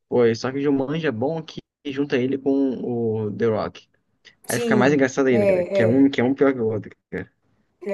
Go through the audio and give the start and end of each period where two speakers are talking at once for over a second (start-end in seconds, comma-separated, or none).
4.5-6.1